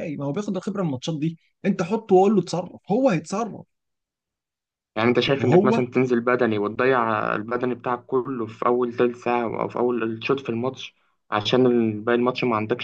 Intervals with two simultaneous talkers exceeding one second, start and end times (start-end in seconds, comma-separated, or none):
none